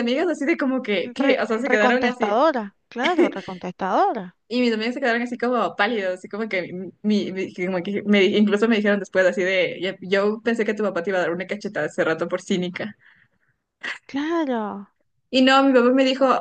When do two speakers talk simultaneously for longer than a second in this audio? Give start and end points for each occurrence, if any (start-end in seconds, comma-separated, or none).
1.2-2.4